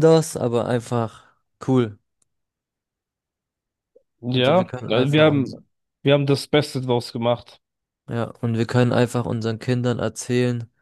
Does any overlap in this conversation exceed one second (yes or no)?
yes